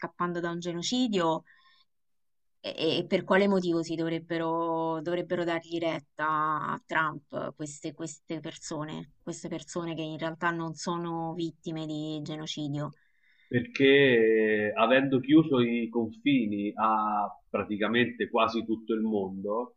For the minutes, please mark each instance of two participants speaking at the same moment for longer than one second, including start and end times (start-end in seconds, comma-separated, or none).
none